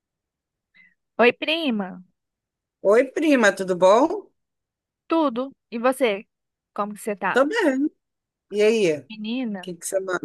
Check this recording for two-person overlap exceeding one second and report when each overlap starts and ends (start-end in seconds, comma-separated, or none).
none